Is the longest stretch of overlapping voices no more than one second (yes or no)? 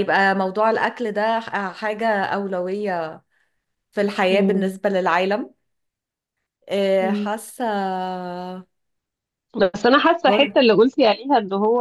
yes